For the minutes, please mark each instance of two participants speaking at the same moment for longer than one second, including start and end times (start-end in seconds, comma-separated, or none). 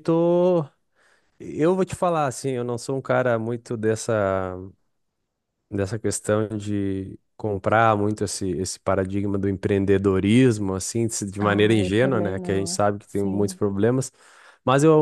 11.4-13.6